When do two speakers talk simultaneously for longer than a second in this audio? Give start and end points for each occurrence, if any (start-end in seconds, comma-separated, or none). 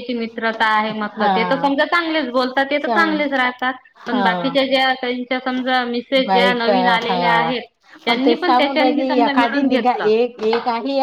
8.1-10.1